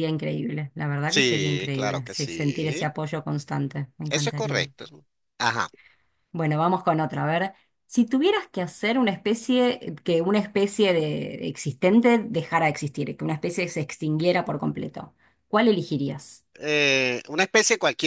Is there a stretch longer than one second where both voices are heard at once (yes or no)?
yes